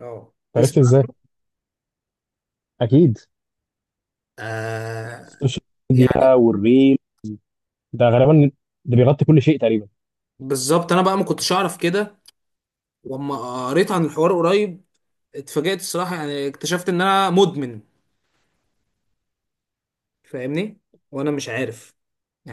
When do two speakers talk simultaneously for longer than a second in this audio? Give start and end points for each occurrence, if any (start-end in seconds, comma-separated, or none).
none